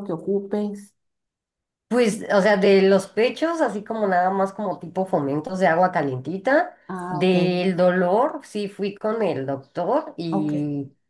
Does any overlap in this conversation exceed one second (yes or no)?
no